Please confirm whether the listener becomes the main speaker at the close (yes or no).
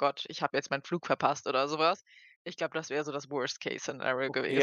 yes